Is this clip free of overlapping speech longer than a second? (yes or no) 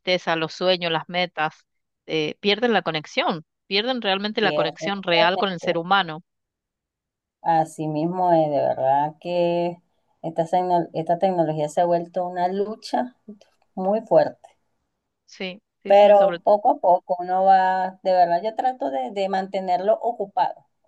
no